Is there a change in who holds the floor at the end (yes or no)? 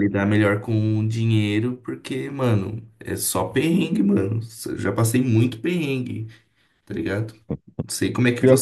no